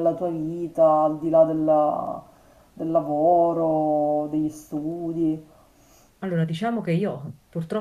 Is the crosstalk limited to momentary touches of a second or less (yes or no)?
yes